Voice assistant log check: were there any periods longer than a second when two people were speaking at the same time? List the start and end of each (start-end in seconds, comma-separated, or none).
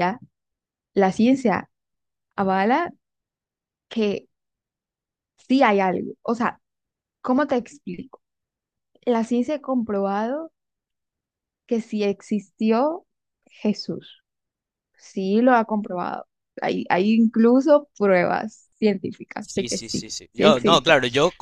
19.4-20.9